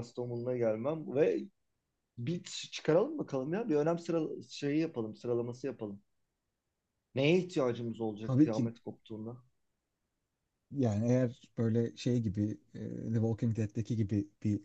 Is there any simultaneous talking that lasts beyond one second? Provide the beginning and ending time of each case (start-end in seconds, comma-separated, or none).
none